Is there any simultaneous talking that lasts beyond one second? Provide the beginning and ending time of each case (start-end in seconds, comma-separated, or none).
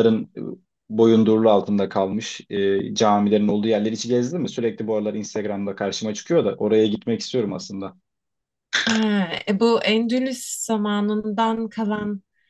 none